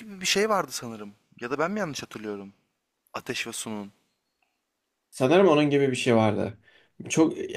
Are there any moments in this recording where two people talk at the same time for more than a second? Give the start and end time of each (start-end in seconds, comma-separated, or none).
none